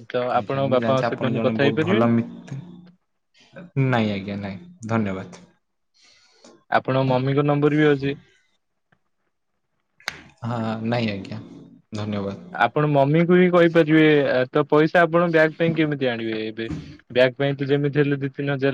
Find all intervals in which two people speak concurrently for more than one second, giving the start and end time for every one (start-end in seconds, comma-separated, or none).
none